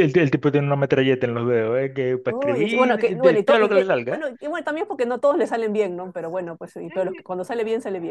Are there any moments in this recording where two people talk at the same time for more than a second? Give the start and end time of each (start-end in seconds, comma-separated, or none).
2.2-4.3